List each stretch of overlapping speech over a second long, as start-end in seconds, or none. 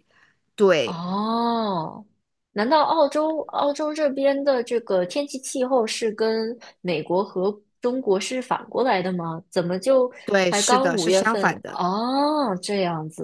10.5-11.8